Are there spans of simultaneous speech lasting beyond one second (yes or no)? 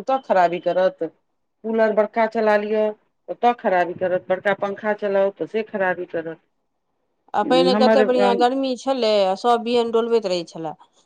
no